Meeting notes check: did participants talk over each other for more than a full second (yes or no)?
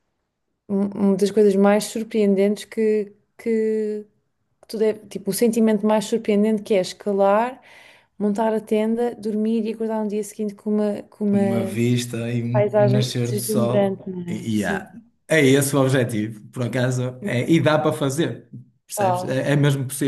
yes